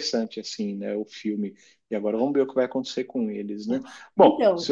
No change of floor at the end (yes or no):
yes